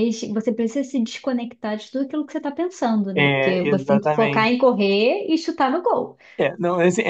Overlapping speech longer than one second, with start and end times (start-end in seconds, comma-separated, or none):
3.1-4.7